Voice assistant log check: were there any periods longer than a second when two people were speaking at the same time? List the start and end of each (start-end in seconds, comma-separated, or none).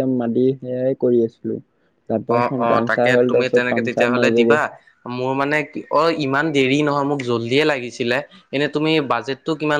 2.3-4.6